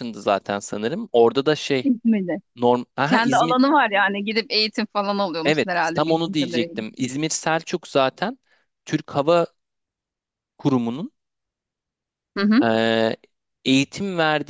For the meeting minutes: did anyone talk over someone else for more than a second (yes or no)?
yes